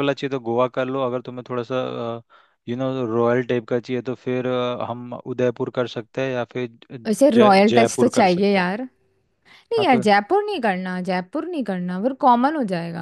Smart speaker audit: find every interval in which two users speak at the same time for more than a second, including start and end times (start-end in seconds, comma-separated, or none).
7.1-8.7